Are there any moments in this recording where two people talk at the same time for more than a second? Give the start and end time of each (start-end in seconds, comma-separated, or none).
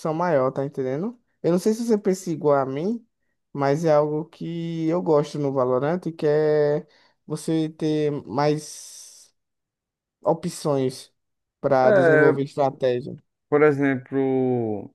none